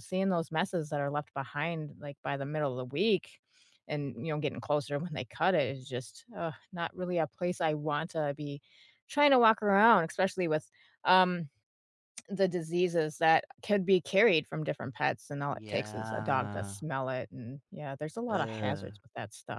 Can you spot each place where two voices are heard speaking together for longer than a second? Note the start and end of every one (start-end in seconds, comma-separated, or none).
15.5-16.8